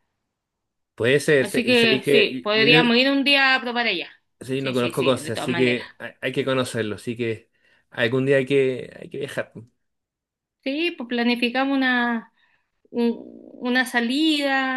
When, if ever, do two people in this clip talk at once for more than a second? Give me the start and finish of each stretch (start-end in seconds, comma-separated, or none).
1.4-3.0, 4.6-5.8